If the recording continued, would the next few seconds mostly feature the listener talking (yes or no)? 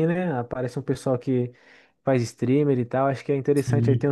no